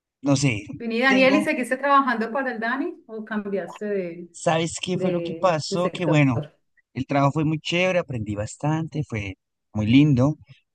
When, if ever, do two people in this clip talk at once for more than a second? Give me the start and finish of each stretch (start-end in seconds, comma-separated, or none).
4.9-6.2